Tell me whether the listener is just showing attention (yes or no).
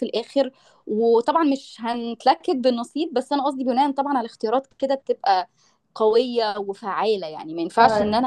yes